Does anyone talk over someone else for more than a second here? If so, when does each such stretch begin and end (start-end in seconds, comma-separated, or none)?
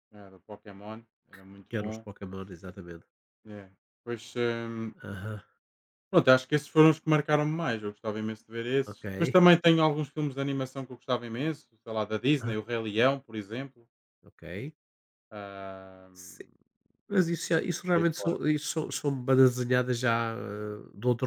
none